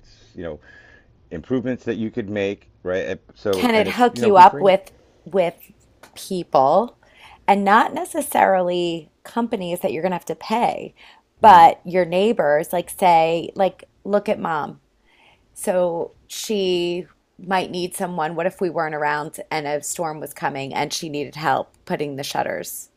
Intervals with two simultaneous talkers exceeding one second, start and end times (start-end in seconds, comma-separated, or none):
3.5-4.7